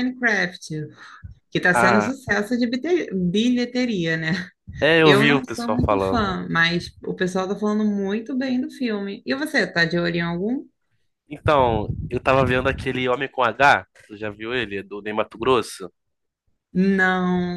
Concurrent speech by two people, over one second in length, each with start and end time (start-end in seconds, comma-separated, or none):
5.0-6.4